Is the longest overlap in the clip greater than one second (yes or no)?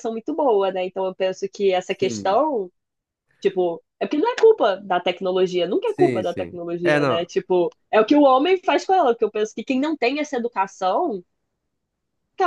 yes